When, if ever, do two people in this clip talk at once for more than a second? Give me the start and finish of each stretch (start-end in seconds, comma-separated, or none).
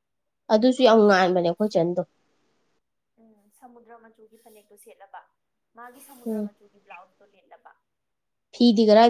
none